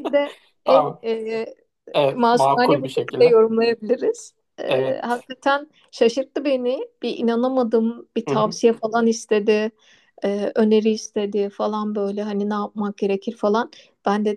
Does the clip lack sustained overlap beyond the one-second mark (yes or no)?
no